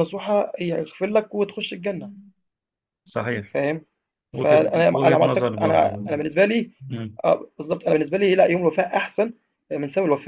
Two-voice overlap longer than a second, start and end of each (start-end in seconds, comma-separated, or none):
4.3-5.9